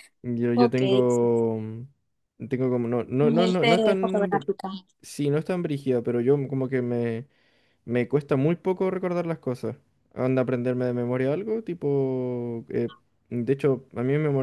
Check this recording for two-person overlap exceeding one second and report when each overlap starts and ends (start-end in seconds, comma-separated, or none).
3.2-4.5